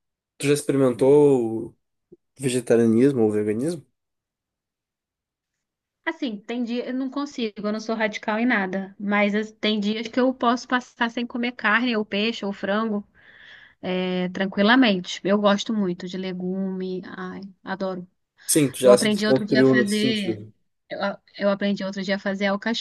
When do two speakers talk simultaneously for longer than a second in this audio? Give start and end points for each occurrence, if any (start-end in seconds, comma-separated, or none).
18.8-20.4